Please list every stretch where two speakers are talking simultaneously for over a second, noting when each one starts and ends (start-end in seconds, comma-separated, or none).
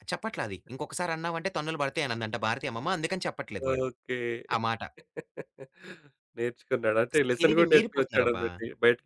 7.1-8.5